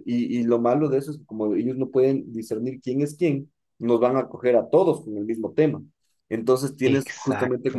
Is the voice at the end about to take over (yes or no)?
no